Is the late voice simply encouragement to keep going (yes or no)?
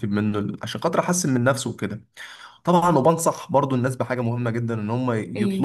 yes